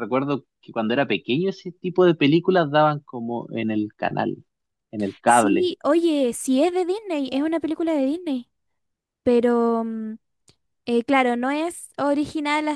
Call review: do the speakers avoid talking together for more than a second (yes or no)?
yes